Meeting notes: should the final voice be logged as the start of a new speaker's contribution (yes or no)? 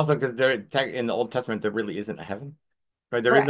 yes